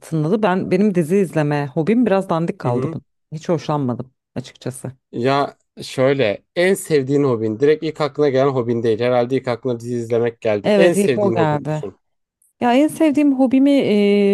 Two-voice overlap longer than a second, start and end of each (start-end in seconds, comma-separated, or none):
10.6-11.8